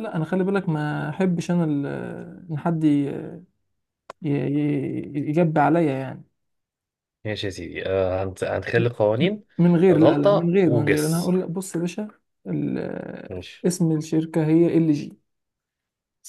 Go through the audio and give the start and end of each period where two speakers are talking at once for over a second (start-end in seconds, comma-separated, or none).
9.9-11.4